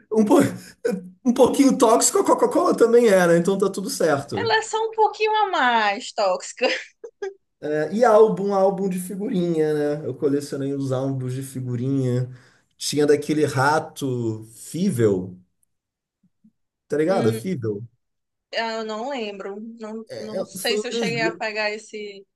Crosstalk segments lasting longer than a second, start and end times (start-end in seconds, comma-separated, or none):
20.1-21.4